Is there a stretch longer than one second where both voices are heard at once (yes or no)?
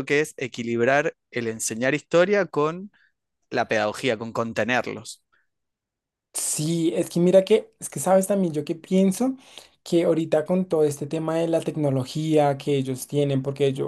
no